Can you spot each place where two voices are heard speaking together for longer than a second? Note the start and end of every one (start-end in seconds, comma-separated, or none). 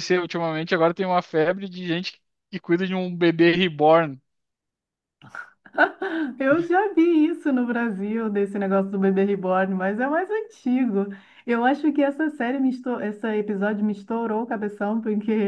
none